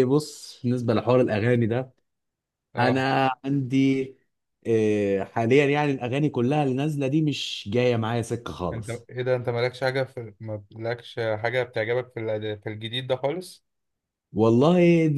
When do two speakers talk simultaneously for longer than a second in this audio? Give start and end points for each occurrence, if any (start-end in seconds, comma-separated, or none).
none